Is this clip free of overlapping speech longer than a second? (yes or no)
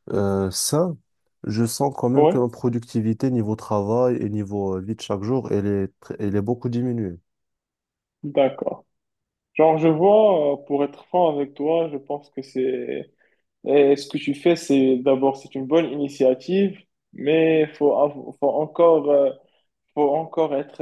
yes